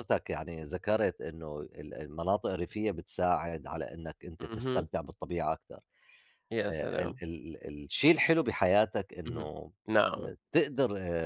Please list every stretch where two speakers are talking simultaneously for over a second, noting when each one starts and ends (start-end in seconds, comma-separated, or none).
none